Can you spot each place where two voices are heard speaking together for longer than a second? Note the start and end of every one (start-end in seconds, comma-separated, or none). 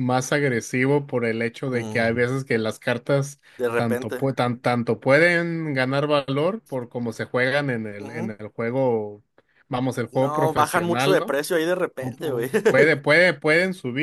10.1-11.4